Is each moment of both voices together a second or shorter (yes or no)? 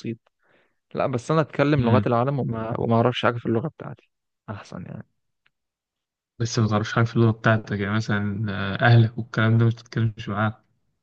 yes